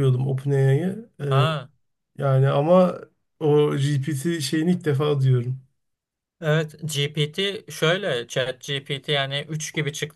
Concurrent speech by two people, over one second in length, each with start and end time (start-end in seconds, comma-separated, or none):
none